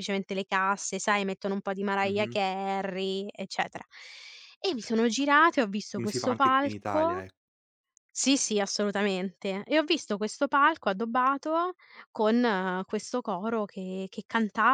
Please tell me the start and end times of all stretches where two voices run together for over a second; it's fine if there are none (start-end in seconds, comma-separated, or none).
5.9-7.2